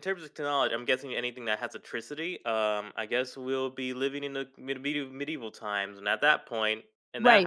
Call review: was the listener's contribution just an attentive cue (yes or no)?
no